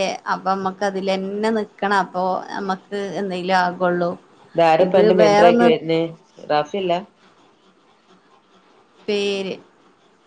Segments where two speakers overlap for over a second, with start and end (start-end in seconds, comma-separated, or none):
none